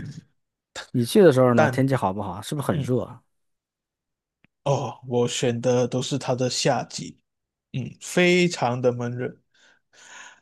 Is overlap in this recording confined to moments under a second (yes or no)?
yes